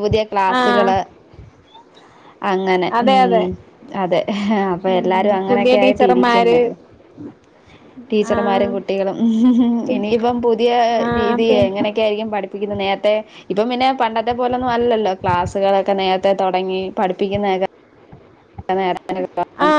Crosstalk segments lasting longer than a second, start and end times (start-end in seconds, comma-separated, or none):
4.9-6.6